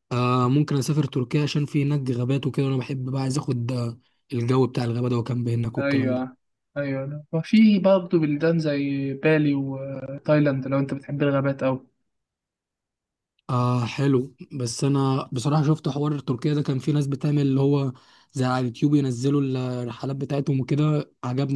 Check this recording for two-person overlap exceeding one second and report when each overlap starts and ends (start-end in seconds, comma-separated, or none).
none